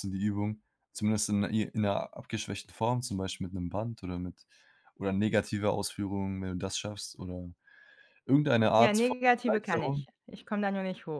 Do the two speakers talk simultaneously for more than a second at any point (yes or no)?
yes